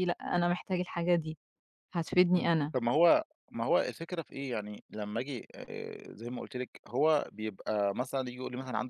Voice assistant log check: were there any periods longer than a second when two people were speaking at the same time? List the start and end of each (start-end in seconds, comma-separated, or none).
none